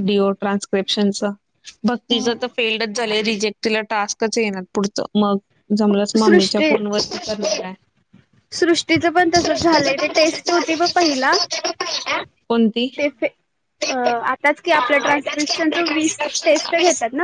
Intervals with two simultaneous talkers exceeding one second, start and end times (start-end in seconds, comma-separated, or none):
9.3-11.3, 14.8-16.7